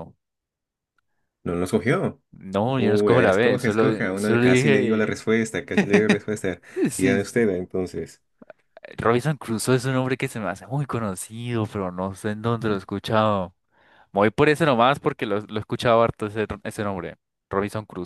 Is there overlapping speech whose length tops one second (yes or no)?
yes